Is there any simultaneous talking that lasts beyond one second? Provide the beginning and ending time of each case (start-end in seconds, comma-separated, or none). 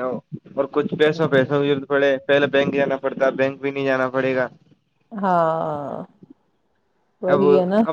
none